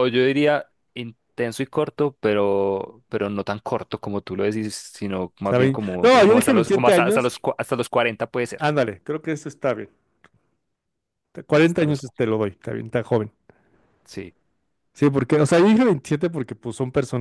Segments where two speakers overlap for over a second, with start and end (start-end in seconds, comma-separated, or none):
5.4-7.3